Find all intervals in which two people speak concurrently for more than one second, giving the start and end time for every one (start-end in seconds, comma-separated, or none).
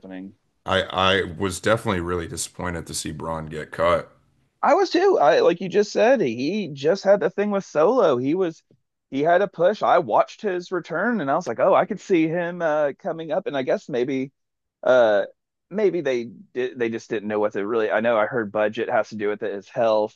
none